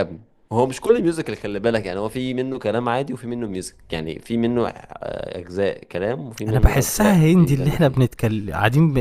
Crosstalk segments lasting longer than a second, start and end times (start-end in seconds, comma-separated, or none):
6.5-8.0